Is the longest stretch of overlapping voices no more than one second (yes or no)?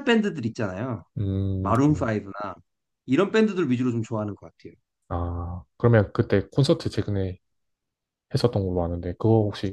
yes